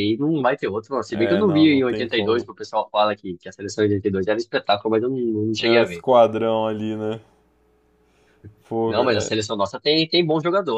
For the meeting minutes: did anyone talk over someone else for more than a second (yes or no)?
yes